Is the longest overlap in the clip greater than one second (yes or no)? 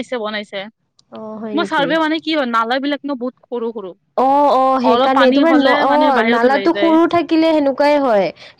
yes